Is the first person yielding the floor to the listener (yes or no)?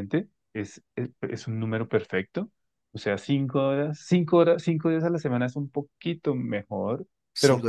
no